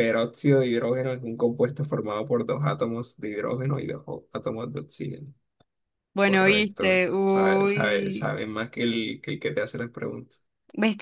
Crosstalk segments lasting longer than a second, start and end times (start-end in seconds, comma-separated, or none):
6.2-8.3